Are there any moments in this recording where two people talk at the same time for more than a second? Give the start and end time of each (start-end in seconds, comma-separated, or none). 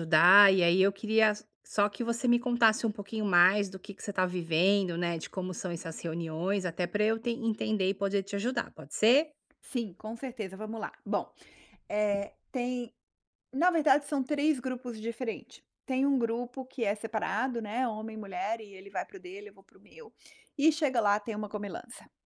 none